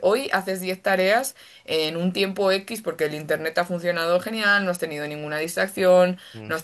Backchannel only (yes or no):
yes